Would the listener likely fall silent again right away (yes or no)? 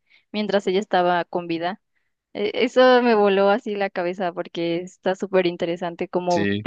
yes